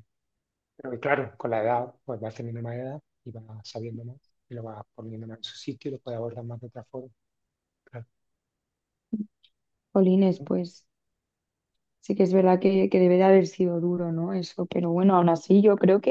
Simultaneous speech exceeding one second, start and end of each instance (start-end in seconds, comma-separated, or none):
none